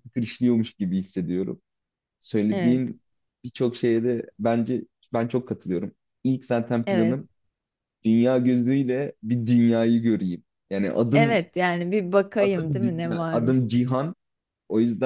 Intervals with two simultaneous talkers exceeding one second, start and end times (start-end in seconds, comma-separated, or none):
12.4-13.8